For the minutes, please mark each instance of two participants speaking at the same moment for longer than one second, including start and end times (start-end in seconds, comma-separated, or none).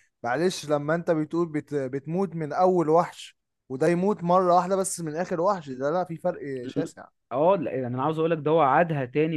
none